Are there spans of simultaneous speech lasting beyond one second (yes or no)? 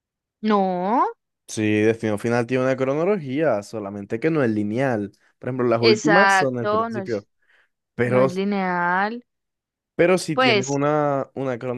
yes